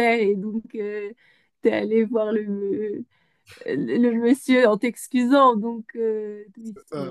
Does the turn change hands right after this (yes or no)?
no